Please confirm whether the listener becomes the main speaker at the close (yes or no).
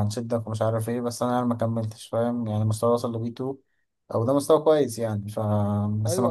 yes